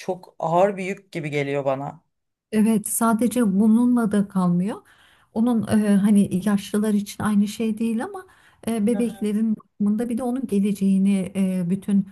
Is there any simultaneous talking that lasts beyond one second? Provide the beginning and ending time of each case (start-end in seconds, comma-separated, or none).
none